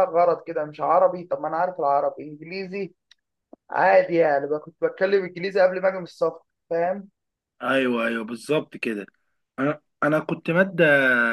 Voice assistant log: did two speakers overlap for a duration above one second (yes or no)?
no